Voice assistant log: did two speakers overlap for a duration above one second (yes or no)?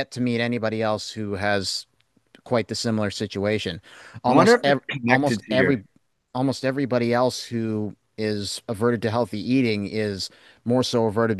yes